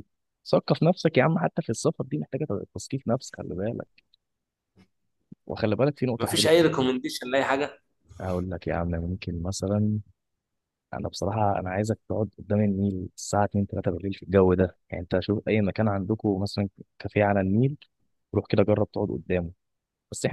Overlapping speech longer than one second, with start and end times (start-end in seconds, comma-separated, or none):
none